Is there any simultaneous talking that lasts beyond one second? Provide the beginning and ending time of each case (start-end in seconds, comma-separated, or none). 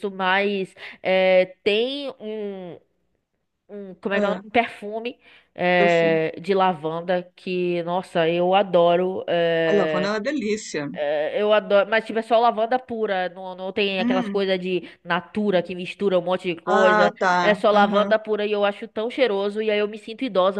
16.6-18.1